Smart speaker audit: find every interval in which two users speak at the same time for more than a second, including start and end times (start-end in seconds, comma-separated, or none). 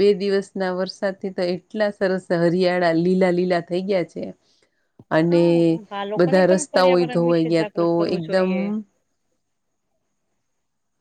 6.2-8.5